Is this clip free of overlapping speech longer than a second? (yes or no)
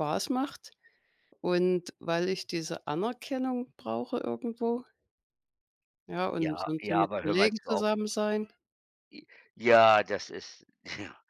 no